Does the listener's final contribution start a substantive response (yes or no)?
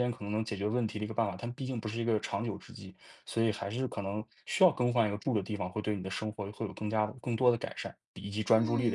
yes